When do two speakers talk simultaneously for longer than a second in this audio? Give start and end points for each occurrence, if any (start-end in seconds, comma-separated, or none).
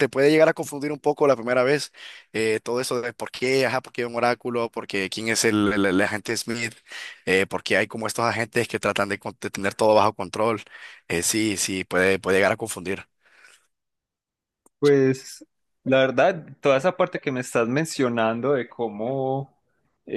none